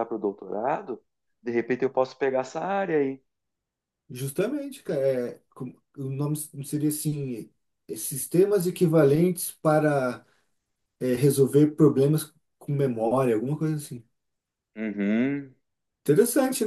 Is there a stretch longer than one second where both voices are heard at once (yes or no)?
no